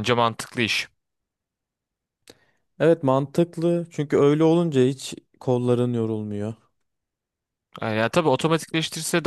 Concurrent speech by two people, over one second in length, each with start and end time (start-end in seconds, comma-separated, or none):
none